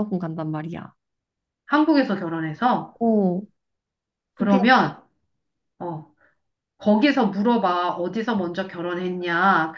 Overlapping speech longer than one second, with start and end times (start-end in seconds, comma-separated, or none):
none